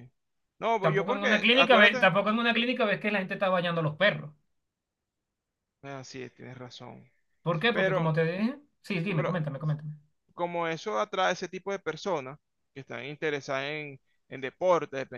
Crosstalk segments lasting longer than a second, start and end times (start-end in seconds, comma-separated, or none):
0.8-2.1